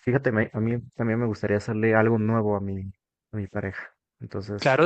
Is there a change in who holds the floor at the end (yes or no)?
yes